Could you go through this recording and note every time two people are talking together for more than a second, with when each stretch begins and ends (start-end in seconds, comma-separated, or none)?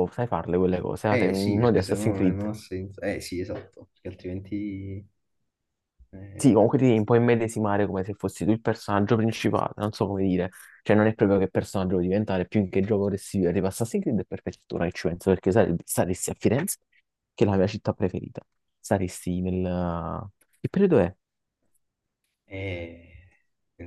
1.1-2.5